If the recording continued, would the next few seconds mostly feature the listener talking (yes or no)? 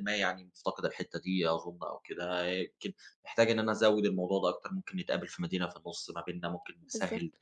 no